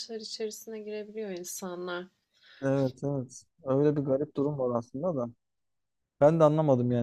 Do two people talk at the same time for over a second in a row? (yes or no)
no